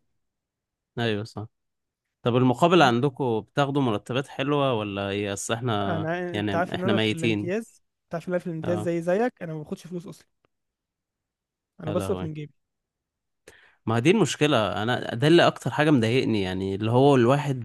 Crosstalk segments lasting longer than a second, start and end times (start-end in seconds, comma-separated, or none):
5.9-7.5